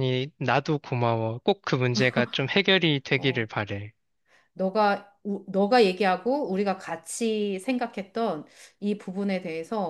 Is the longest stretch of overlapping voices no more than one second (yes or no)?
yes